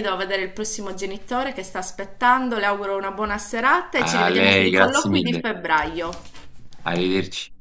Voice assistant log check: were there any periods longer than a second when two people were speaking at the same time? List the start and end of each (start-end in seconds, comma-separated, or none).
4.0-5.5